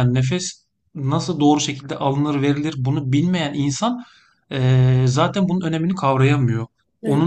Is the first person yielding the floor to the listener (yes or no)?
no